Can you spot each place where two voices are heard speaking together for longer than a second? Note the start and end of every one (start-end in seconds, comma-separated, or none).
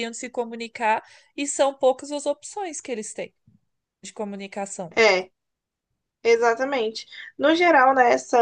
none